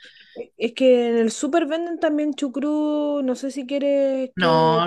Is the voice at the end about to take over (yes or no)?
yes